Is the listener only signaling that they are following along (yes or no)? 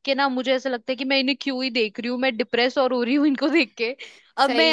yes